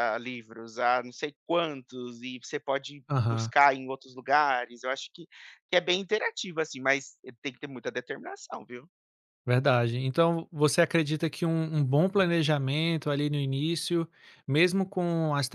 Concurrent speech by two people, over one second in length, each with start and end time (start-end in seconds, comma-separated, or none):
none